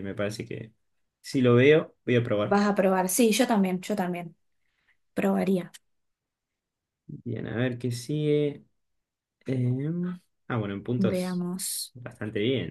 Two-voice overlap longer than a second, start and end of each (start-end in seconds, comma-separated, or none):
none